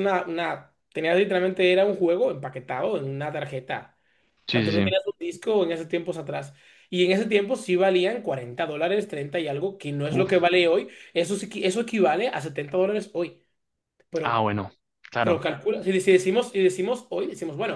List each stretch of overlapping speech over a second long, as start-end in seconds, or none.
none